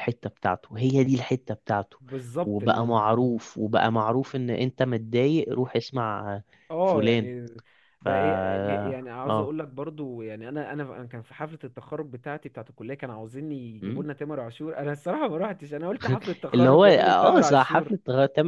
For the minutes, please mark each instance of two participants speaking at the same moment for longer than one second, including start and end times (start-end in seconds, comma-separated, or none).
16.5-17.9